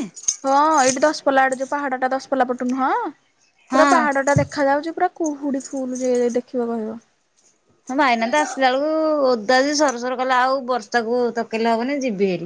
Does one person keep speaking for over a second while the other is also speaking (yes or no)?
no